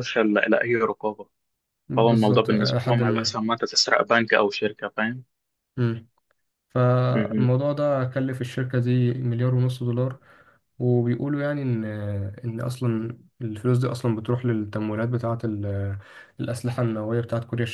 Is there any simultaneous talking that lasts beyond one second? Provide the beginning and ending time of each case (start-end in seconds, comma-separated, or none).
2.0-3.4